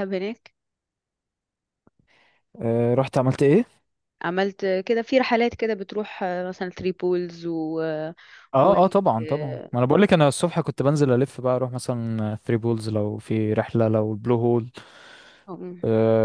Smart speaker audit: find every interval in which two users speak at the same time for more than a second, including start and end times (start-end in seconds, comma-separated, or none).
none